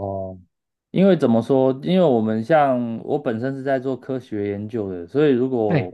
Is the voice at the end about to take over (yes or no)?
no